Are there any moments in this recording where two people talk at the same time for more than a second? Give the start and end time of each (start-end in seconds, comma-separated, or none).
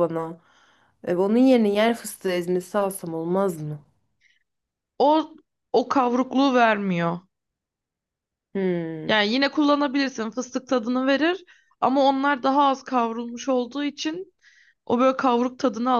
none